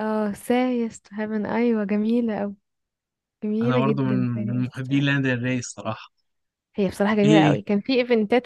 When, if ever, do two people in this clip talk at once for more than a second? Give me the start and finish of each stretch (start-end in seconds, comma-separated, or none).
3.6-5.0